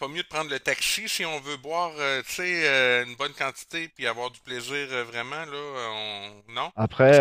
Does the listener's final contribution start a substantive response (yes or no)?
no